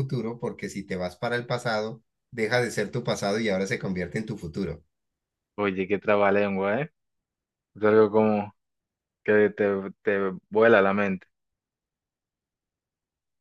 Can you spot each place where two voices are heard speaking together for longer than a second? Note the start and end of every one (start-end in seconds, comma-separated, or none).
none